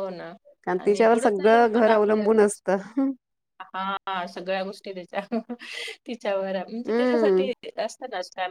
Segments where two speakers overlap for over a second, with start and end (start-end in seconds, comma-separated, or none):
none